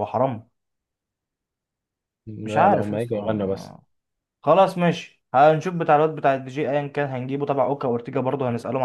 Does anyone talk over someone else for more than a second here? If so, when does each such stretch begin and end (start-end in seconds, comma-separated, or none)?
2.4-3.8